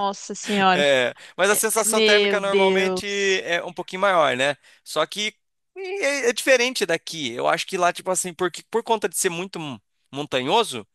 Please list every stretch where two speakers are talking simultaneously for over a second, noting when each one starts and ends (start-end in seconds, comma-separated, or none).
1.8-3.1